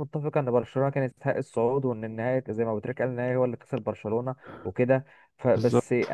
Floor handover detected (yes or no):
no